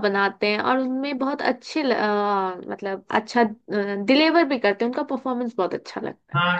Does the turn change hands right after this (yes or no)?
yes